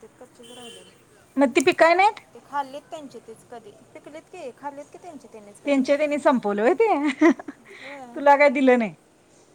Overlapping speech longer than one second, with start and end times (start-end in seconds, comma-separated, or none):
none